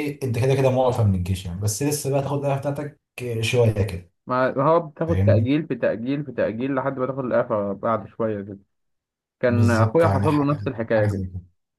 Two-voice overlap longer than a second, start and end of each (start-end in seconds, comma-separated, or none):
9.5-11.2